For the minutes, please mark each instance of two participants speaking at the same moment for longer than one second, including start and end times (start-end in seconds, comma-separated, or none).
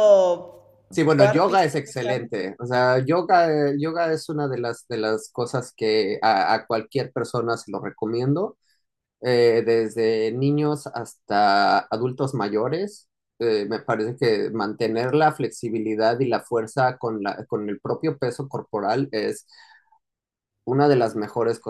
0.9-2.3